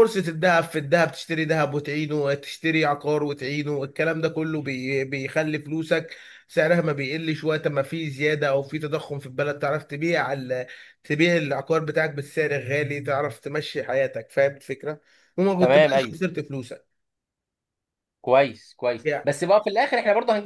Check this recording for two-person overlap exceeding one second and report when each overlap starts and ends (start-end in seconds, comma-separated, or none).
none